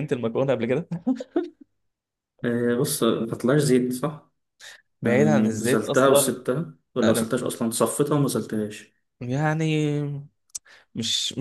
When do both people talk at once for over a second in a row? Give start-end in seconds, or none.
5.0-6.3